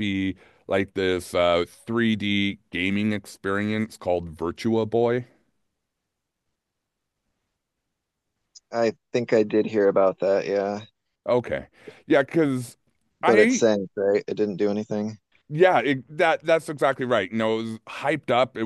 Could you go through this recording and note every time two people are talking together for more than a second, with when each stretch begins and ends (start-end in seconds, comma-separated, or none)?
none